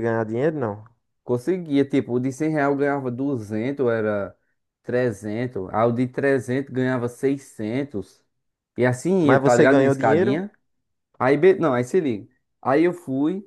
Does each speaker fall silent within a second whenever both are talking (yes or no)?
no